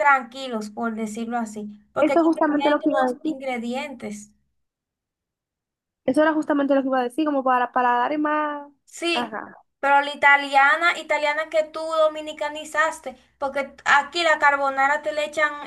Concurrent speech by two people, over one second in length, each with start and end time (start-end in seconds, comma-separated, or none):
2.0-3.3